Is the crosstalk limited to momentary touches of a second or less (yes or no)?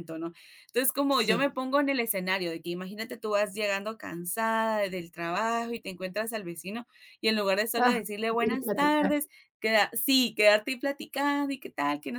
no